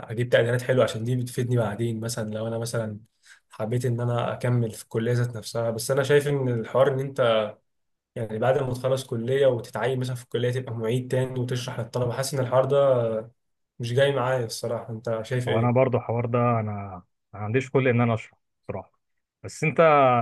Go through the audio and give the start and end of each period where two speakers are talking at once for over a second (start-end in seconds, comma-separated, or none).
none